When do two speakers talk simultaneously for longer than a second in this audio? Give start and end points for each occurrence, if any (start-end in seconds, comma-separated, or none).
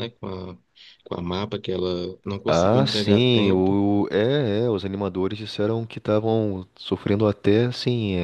2.5-3.8